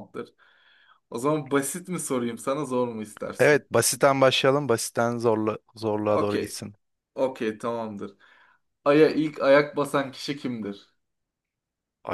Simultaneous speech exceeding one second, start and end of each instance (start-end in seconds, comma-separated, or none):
none